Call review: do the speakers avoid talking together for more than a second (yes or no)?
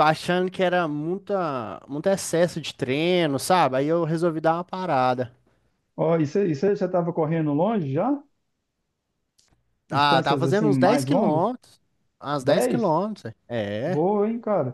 no